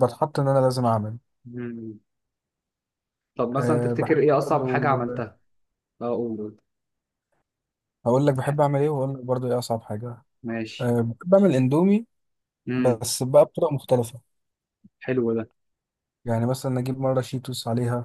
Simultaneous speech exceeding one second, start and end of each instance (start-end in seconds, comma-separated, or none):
3.6-4.8